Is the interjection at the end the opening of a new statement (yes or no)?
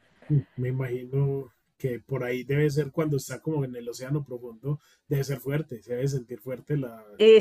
yes